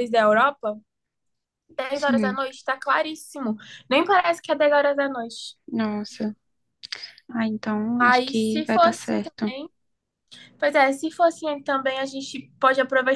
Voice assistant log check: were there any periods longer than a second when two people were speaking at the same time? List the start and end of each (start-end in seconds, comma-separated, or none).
8.0-9.5